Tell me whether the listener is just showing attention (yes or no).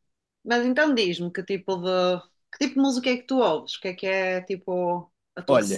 no